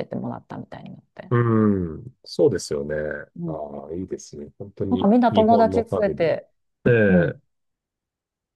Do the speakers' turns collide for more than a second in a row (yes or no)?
yes